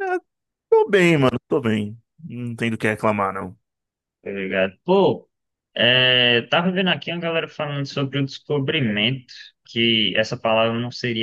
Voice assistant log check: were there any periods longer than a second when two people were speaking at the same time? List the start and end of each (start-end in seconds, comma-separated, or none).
none